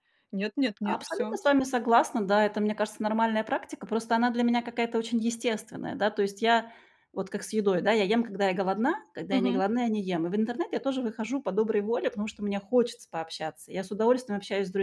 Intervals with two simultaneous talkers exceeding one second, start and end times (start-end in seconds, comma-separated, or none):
none